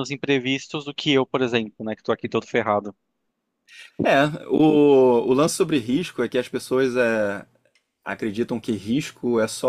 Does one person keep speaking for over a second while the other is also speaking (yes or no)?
no